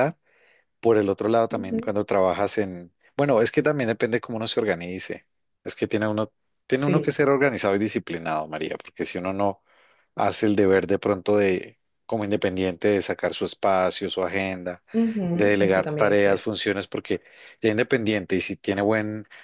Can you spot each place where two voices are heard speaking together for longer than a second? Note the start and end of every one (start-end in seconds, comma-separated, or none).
15.3-16.5